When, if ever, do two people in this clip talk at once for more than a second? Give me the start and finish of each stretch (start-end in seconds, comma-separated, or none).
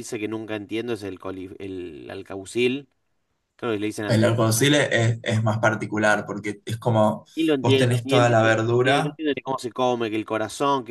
7.6-9.2